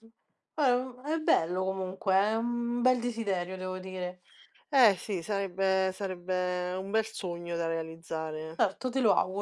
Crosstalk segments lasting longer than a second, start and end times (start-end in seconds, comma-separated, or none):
none